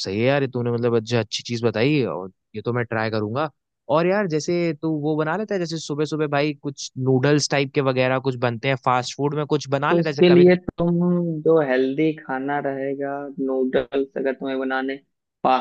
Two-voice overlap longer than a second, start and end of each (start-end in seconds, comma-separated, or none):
none